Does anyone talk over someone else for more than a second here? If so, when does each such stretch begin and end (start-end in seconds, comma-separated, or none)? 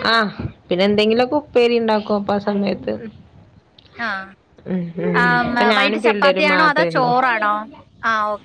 5.2-7.1